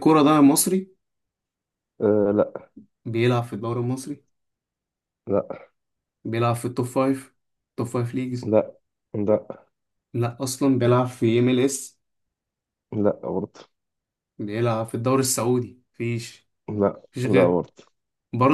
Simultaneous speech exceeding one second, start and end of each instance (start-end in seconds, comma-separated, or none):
none